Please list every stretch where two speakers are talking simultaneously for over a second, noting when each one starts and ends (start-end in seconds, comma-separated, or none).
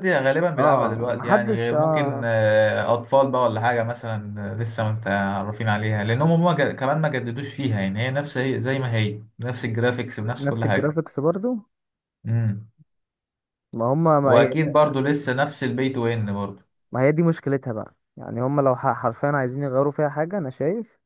0.6-2.3